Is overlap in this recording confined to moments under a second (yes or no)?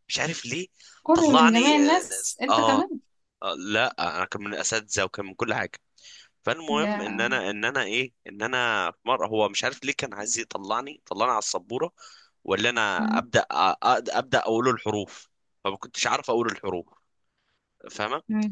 no